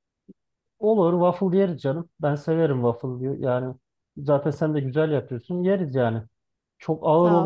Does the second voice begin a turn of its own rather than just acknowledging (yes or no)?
no